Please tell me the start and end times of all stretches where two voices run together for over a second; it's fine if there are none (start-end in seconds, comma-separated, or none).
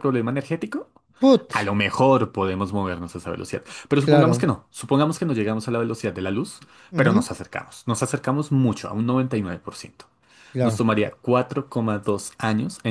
none